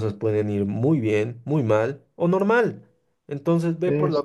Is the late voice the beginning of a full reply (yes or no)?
no